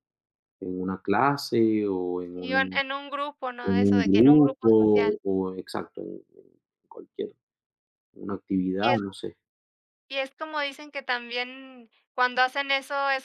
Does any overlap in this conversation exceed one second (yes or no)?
yes